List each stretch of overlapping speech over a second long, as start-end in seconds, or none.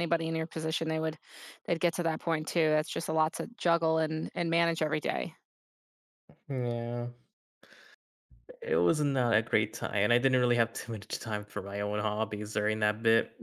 none